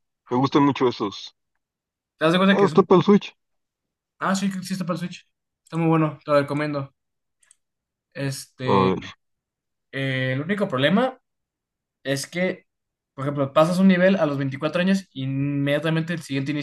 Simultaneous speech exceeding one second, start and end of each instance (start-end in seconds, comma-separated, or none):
none